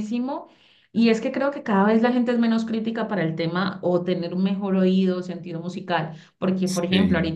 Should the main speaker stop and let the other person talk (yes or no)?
no